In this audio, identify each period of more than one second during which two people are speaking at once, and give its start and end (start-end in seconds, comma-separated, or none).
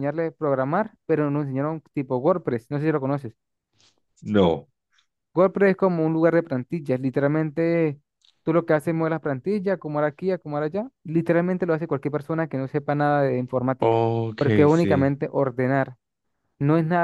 13.8-15.2